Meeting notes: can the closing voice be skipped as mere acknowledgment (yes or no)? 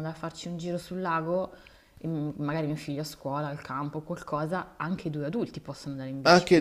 no